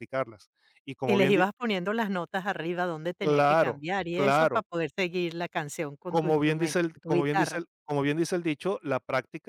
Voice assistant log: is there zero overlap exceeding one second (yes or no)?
no